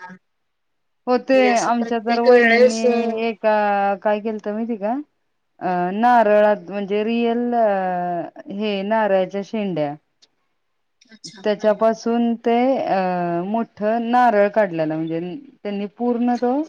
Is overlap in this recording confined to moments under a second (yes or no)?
no